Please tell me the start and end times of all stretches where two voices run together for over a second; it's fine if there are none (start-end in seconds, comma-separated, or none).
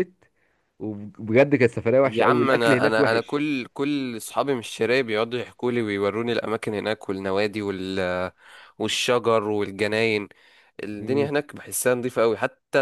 2.0-3.4